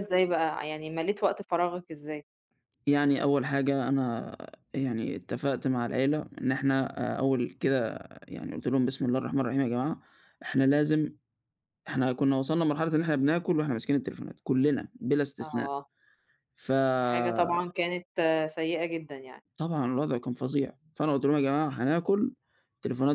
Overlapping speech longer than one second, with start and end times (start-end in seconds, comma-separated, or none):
none